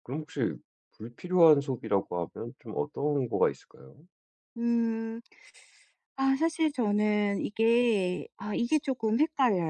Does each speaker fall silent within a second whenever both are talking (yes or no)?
yes